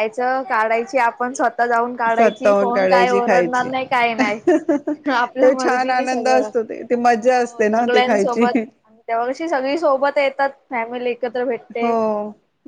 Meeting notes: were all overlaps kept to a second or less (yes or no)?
no